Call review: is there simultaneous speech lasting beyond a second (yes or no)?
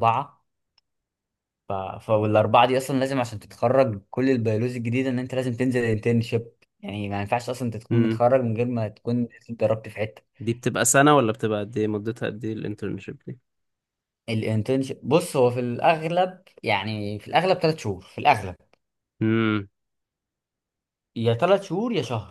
no